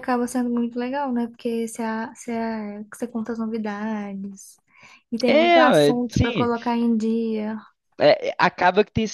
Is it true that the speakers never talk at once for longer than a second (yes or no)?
no